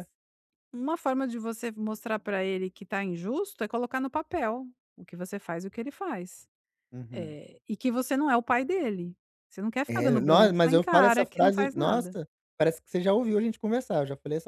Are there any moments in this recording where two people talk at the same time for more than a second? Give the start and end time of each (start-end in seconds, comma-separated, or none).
9.9-12.2